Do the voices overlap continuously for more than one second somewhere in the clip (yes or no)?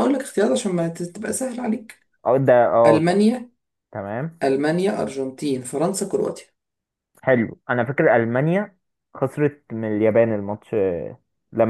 no